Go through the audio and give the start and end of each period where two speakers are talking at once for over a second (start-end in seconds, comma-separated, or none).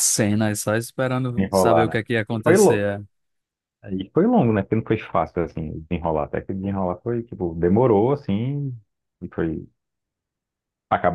1.4-2.9